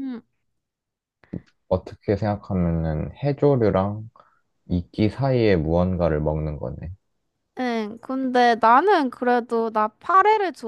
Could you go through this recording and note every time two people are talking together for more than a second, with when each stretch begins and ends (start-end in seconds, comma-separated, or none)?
none